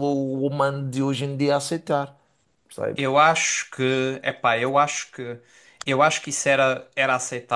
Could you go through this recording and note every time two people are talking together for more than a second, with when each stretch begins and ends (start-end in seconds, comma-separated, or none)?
none